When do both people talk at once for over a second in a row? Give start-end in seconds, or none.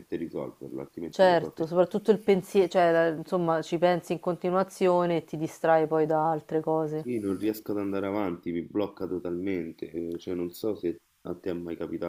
none